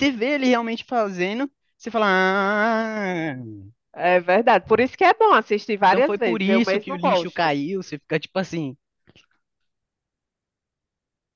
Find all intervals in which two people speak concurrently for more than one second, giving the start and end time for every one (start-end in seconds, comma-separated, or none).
5.9-7.5